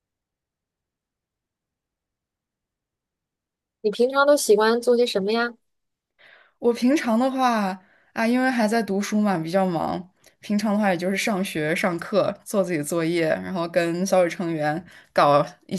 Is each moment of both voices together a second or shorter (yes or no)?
yes